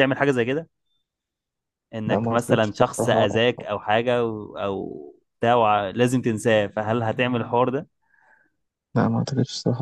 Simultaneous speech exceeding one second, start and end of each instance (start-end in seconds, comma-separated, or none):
2.1-3.3